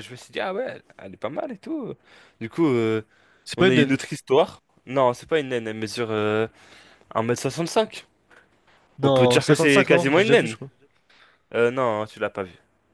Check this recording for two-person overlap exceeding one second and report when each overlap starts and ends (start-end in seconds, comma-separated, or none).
9.0-10.6